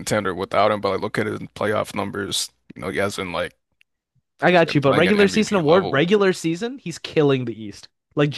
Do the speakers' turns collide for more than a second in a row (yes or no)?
yes